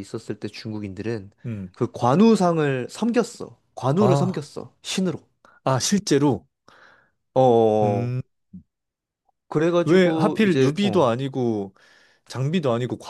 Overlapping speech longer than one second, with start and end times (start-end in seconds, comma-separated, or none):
9.8-11.1